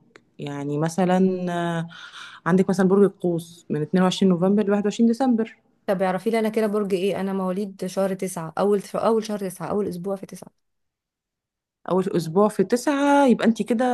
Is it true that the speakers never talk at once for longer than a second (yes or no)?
yes